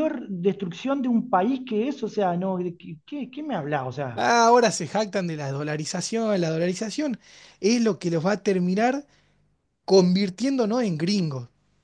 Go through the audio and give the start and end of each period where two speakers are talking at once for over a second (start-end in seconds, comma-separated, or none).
none